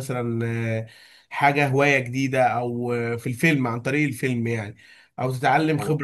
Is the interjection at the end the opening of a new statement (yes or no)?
no